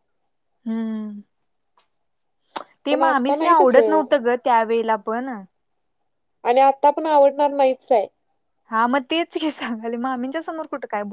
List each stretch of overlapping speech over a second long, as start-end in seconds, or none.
2.9-4.2